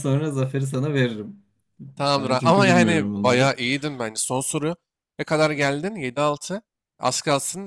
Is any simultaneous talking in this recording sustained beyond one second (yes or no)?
yes